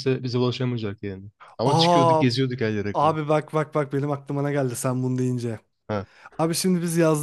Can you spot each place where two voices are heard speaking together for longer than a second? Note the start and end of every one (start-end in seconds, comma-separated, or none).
none